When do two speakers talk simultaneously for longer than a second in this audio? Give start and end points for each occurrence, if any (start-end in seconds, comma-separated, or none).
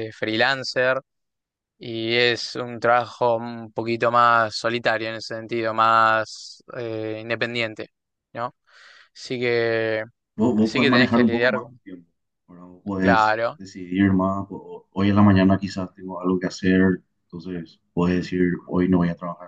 10.6-11.8